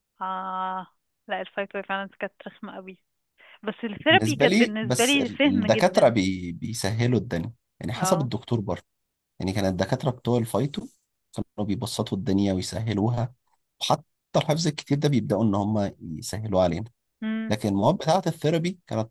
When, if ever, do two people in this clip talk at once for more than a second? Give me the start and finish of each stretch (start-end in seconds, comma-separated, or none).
4.1-6.1